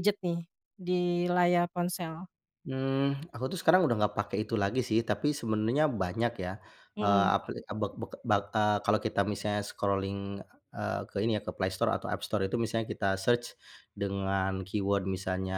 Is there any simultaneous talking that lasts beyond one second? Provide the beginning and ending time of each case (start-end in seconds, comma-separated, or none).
none